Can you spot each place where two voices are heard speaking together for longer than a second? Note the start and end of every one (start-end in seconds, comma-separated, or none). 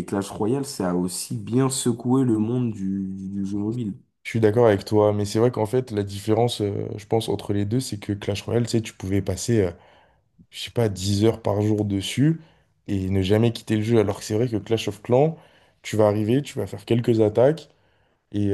none